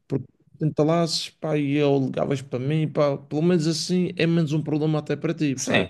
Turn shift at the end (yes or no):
yes